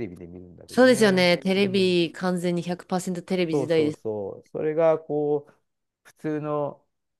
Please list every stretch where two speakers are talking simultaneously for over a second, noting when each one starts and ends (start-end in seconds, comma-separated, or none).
0.7-2.0